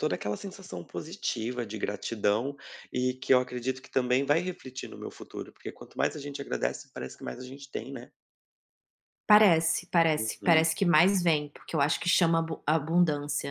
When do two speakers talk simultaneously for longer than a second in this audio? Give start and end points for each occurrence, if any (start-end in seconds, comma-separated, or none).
none